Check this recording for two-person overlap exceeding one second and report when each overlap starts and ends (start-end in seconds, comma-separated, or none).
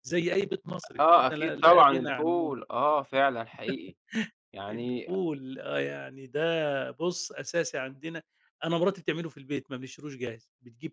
1.0-2.5